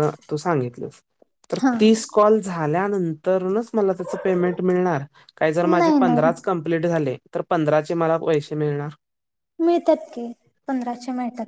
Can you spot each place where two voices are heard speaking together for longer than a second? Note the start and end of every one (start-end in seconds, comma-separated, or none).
none